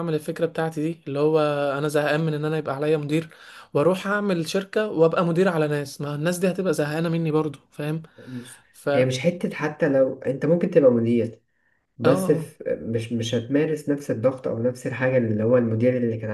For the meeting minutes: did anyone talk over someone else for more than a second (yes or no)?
no